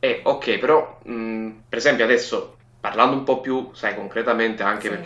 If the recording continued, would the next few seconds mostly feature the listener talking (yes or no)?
no